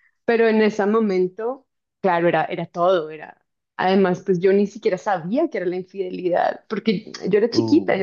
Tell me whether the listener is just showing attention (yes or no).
yes